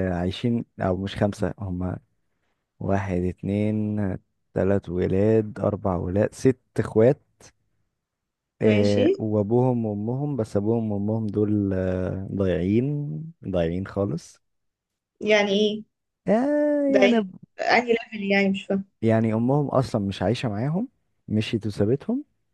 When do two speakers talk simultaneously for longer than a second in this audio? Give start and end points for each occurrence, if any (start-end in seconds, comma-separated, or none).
none